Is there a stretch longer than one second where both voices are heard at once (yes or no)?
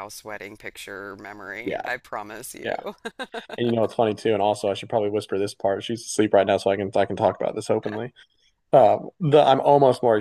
no